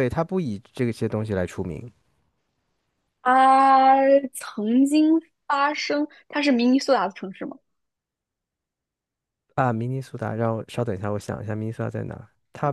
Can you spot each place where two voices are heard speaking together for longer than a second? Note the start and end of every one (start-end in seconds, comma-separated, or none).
none